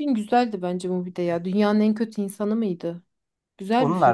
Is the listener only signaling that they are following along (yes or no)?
no